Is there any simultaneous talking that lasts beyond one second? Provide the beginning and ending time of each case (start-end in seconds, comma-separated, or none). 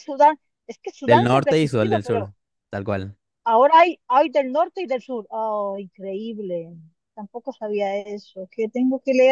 1.0-2.3